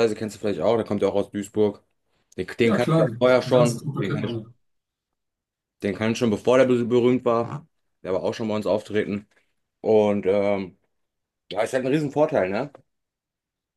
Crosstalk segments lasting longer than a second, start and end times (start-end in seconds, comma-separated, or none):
2.6-4.4